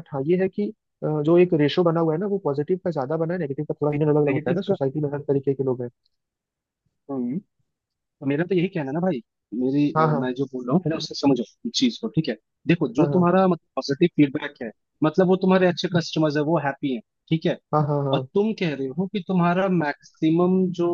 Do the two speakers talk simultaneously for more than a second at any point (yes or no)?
no